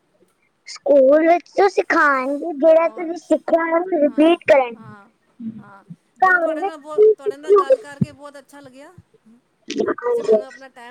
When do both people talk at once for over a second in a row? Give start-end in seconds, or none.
6.6-7.8